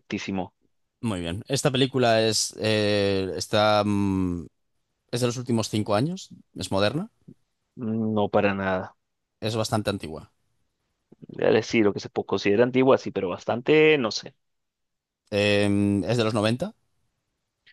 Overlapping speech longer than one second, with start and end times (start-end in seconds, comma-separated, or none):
none